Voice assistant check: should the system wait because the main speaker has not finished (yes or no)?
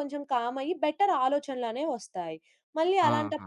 yes